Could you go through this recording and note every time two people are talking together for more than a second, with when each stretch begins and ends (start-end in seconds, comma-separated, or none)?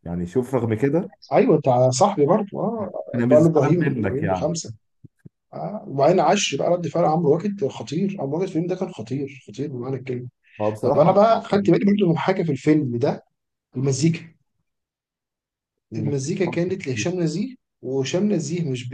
3.1-4.5